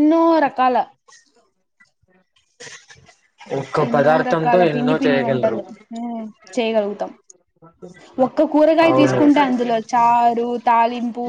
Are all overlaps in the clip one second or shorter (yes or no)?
no